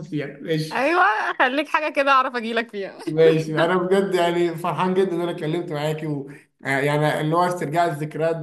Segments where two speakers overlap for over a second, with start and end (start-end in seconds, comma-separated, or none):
none